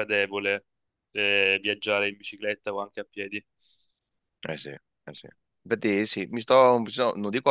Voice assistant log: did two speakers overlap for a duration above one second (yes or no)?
no